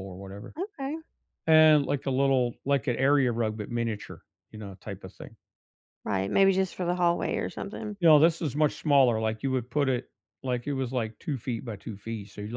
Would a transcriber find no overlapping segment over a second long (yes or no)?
yes